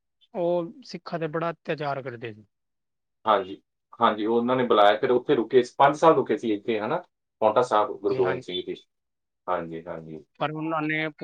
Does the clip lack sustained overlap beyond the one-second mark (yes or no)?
yes